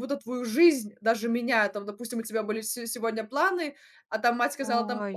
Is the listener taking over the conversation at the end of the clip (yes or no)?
no